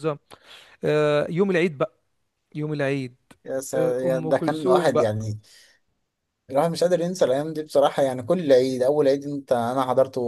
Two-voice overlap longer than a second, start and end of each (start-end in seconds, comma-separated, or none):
3.8-5.1